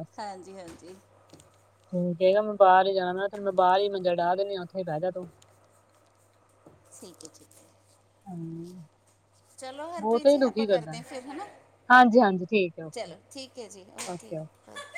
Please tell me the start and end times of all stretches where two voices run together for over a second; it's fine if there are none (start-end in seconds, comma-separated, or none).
none